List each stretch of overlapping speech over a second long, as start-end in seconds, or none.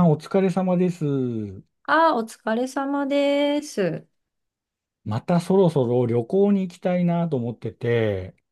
none